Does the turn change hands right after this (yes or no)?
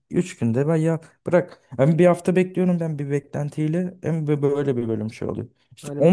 no